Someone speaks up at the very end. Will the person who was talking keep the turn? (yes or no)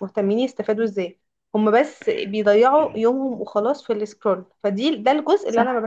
yes